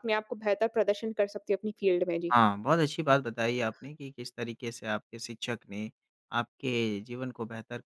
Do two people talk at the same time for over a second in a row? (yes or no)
no